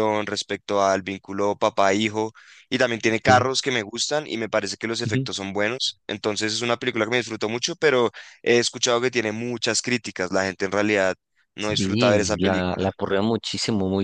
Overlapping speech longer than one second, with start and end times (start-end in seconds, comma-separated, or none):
11.6-12.9